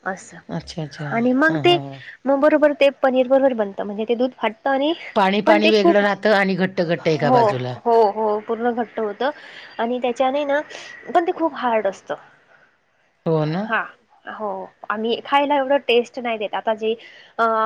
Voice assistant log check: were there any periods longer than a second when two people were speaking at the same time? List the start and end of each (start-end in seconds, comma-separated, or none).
5.5-7.4